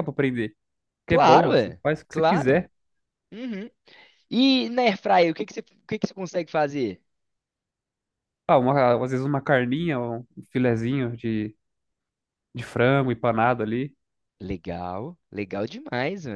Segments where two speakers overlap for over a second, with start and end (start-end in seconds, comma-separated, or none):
1.1-2.6